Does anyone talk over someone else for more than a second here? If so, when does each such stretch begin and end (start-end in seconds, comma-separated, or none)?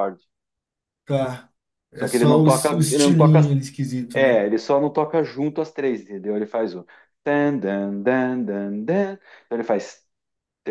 1.9-3.4